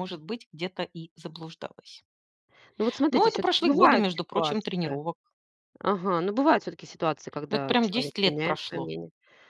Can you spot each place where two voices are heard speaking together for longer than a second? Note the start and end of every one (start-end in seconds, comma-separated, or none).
3.1-4.7, 7.5-8.9